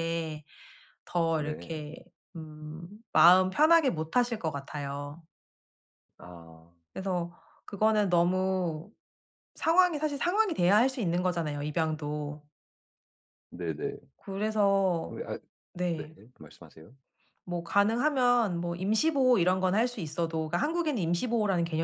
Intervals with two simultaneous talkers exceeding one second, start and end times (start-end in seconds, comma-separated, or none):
none